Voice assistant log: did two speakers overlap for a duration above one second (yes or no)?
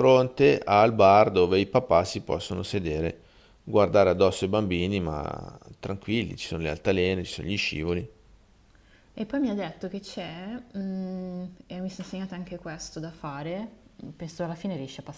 no